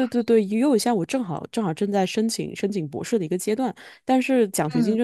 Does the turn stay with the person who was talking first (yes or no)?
yes